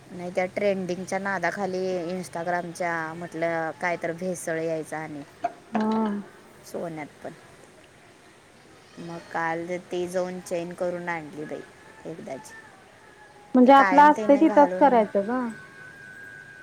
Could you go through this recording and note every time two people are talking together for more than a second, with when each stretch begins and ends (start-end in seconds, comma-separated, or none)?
13.7-15.0